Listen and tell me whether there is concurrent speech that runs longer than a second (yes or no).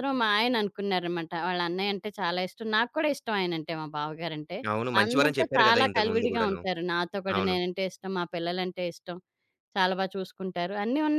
yes